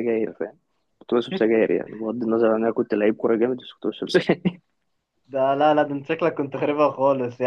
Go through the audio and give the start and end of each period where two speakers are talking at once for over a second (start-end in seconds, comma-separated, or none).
none